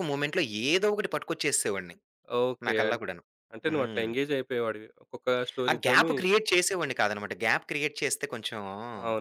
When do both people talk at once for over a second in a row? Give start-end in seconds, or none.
none